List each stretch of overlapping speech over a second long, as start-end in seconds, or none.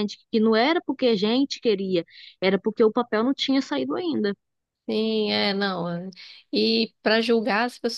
none